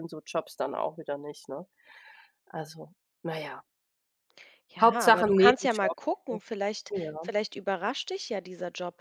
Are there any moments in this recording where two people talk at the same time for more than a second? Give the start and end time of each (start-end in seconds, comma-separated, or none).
4.8-6.4